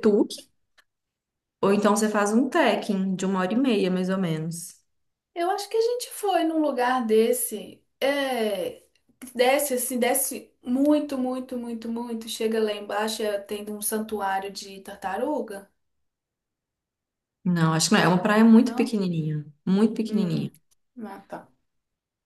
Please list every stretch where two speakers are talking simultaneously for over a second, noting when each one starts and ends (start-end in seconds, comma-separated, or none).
none